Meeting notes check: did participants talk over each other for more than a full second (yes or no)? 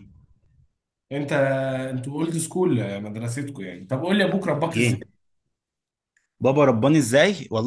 no